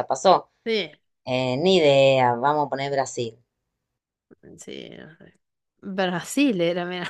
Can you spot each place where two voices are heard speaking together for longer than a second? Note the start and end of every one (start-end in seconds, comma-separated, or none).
none